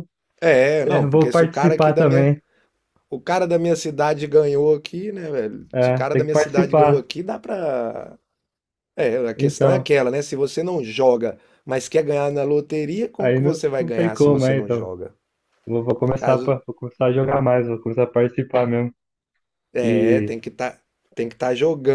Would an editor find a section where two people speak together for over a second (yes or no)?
yes